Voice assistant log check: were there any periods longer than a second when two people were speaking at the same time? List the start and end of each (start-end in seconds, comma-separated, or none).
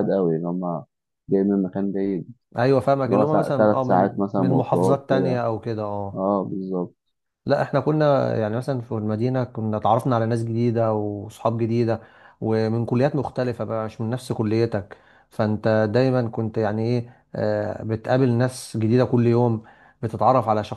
3.0-5.4